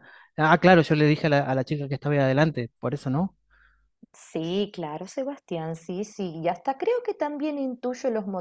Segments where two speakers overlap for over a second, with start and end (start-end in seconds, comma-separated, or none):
none